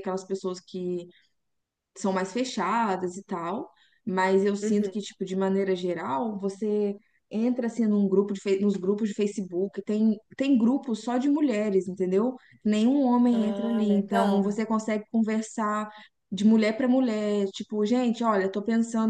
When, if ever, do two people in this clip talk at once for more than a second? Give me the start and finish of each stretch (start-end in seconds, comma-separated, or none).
13.3-14.6